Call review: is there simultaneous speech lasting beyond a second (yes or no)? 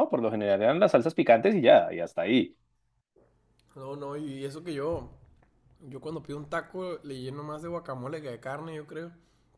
no